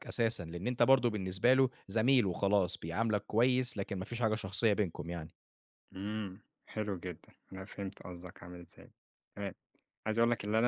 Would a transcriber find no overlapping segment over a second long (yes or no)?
yes